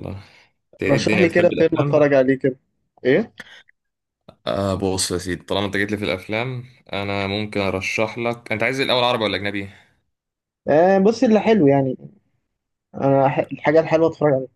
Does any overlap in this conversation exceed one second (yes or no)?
yes